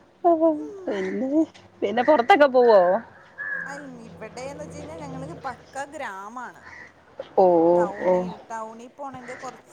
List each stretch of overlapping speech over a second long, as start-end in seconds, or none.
none